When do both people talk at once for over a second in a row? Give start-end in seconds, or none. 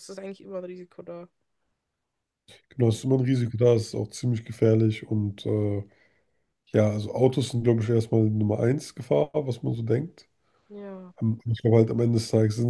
none